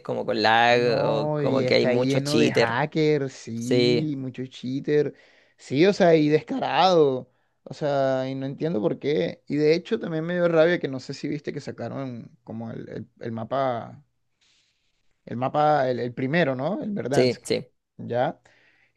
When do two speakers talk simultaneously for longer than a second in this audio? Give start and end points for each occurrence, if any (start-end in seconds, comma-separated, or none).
0.7-2.8